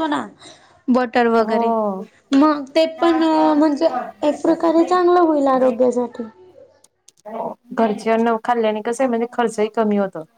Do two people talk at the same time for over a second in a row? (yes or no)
no